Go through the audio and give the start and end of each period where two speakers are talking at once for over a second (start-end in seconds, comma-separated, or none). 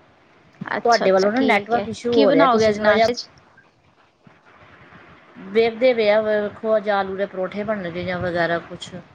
0.8-3.1